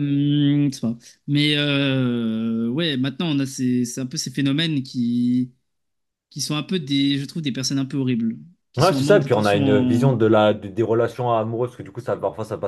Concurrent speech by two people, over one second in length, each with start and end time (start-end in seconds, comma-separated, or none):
8.8-10.1